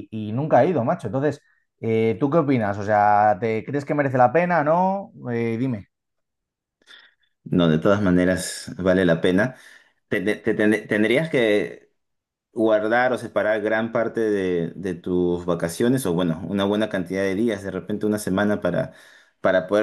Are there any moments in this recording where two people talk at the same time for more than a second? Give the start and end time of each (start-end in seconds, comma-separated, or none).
none